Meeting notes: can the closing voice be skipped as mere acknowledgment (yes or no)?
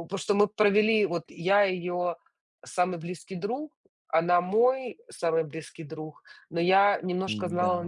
yes